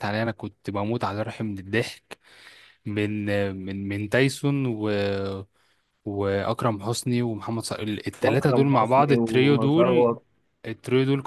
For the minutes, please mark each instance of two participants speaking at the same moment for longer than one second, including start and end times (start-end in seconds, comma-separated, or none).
8.2-10.1